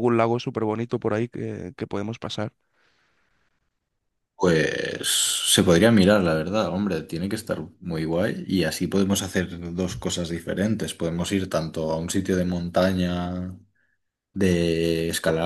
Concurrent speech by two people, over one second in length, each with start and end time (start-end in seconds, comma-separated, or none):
none